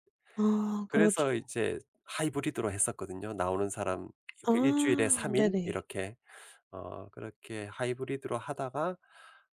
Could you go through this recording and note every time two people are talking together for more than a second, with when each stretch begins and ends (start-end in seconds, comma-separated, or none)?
4.5-5.8